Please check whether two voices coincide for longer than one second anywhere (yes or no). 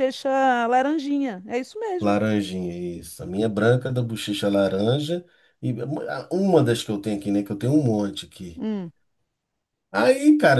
no